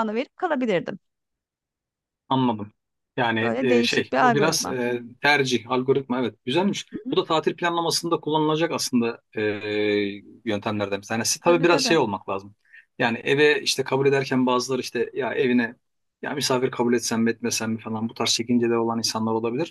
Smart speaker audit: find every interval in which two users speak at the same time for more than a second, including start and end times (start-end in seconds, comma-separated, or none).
3.4-4.8